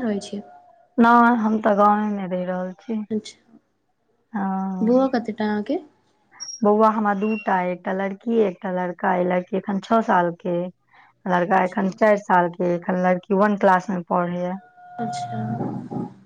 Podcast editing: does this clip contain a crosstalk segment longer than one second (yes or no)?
no